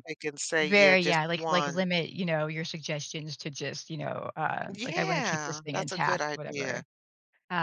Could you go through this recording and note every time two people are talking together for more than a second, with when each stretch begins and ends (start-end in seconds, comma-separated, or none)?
0.6-1.9, 4.7-6.8